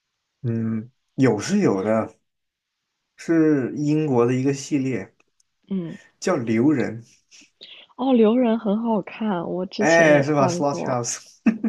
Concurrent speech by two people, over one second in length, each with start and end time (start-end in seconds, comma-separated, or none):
9.8-11.0